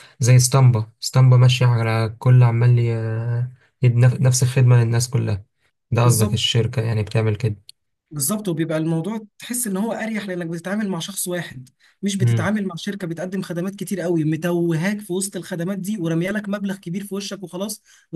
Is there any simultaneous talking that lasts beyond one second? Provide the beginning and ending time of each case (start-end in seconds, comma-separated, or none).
none